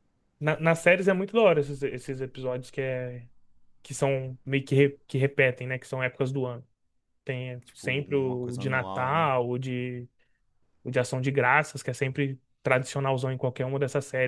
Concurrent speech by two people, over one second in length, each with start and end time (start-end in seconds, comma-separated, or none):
7.7-9.3